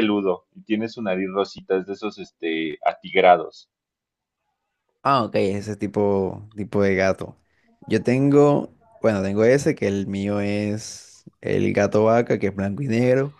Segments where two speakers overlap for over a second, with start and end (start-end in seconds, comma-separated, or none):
none